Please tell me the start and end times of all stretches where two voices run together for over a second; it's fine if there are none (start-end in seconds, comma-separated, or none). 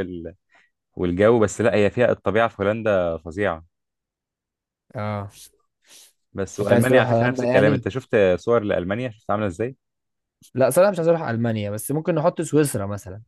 6.6-7.9